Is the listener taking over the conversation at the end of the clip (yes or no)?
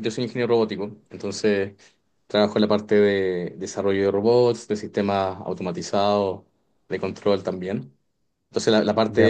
no